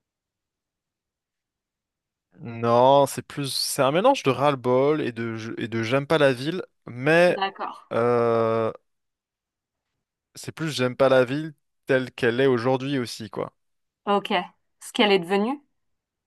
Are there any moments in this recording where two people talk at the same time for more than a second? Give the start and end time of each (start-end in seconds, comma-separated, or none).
none